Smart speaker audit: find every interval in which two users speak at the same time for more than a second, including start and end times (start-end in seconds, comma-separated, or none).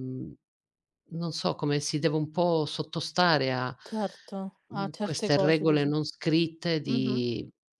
4.7-5.9